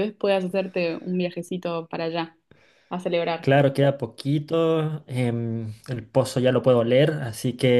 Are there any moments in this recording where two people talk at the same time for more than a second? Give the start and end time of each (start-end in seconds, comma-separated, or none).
none